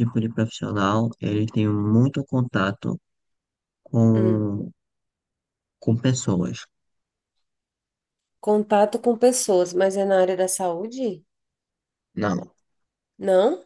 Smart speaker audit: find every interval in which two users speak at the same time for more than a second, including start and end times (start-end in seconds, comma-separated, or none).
none